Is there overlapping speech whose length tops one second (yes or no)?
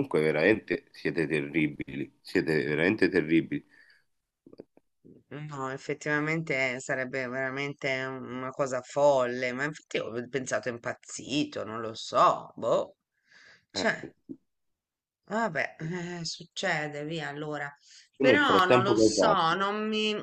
yes